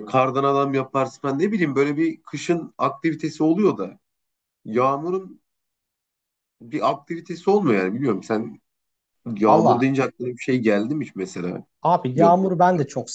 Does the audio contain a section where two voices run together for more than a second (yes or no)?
no